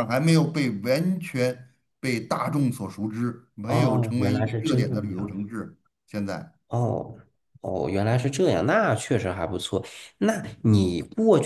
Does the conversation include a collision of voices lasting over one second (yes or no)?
yes